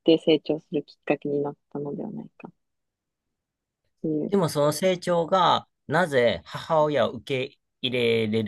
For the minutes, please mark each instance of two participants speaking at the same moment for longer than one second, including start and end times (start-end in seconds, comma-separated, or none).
none